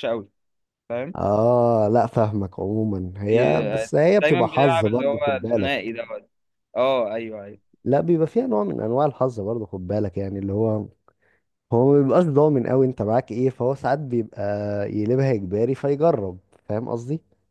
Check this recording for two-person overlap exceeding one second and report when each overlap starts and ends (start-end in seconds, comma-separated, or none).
3.3-5.7